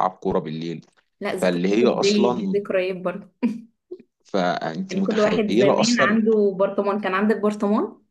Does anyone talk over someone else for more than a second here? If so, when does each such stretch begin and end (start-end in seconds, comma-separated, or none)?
1.4-2.6, 4.9-6.2